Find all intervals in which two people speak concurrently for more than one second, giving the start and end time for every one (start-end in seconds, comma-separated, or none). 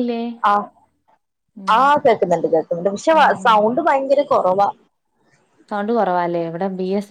none